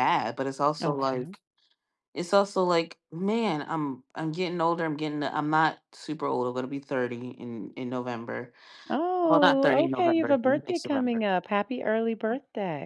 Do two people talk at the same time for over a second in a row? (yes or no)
yes